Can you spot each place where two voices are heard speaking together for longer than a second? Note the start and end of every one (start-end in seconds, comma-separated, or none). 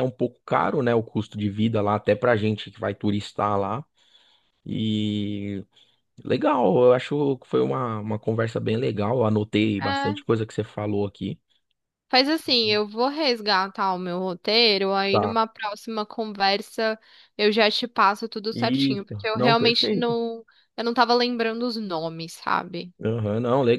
18.5-20.2